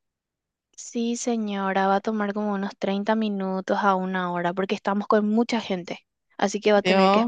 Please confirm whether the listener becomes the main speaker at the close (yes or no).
yes